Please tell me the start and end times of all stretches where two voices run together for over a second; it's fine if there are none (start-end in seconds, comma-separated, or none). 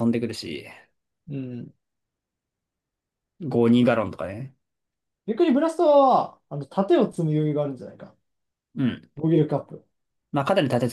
none